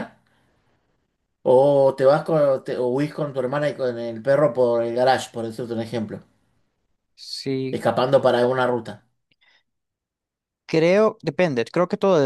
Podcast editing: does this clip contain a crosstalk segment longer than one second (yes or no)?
no